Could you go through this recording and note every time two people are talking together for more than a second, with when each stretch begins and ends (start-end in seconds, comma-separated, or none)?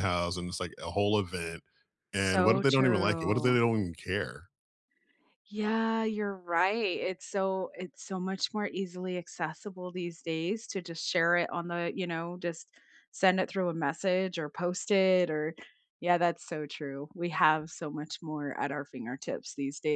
2.2-3.6